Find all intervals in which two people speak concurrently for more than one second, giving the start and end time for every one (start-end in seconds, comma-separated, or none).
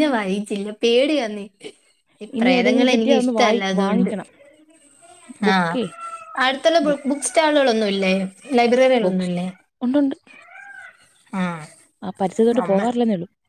2.4-4.1